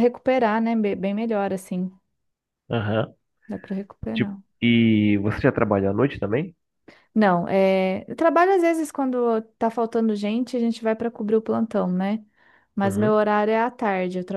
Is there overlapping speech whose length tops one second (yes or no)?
no